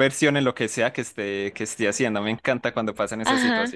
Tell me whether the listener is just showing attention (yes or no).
no